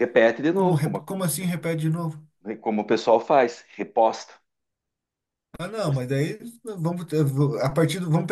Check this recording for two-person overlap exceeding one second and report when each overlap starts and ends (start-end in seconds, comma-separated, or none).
none